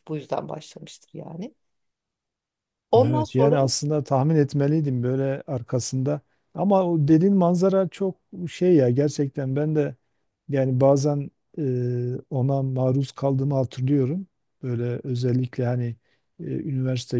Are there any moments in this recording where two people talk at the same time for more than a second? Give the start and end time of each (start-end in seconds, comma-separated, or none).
none